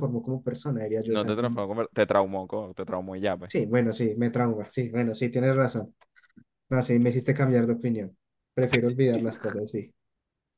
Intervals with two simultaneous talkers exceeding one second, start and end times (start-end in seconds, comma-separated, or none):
none